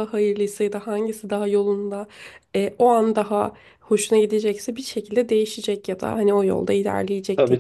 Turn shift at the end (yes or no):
yes